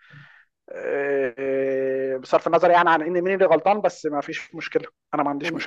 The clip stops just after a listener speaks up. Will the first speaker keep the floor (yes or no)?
no